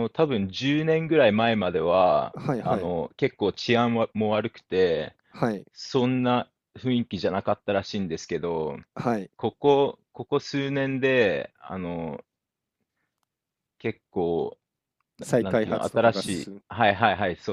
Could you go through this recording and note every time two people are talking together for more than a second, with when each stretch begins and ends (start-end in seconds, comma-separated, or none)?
15.2-16.6